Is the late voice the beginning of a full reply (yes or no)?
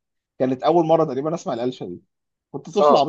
no